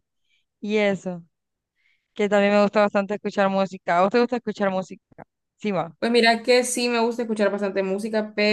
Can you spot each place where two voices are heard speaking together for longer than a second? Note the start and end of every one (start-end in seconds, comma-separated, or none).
none